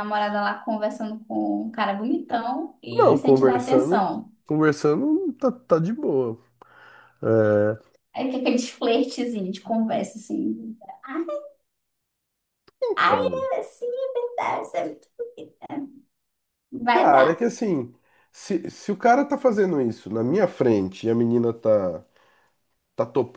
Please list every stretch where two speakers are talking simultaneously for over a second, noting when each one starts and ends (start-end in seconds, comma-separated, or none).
2.9-4.3